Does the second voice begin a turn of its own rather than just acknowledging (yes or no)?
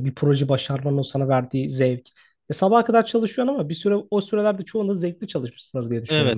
yes